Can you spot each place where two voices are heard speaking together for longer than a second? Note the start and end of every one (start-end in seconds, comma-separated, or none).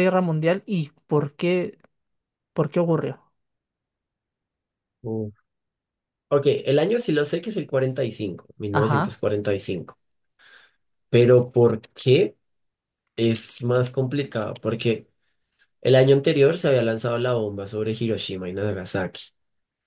none